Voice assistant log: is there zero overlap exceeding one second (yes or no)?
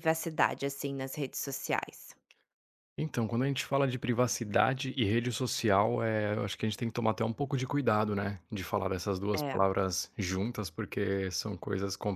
yes